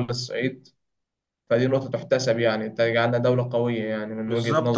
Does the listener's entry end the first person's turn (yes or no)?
yes